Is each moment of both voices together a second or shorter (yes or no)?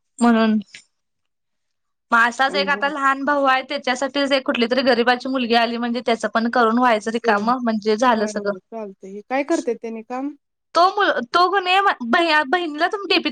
yes